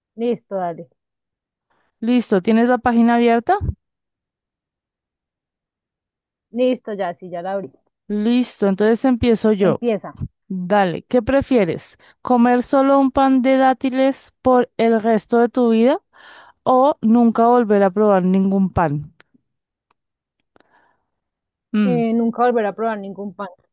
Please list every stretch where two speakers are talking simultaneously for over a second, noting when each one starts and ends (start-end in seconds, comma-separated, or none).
none